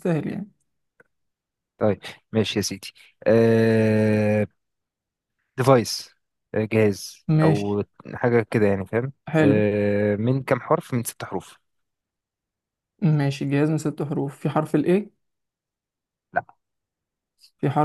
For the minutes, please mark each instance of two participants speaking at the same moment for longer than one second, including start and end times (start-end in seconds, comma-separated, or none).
none